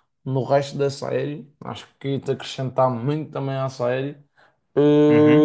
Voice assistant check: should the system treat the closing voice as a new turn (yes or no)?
yes